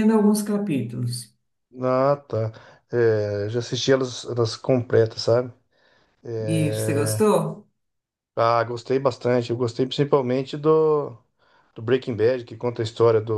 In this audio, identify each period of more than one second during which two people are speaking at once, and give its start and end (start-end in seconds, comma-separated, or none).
none